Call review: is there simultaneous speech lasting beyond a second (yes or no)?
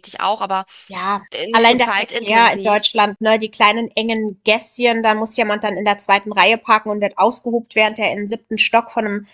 yes